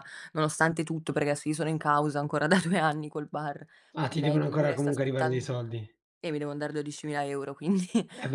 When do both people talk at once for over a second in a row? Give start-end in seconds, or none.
4.1-5.5